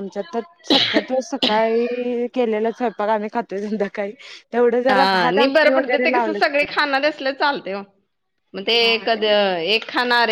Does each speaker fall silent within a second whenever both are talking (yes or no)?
no